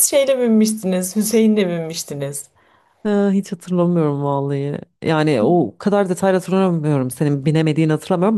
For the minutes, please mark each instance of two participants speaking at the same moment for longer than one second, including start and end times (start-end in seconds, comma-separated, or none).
none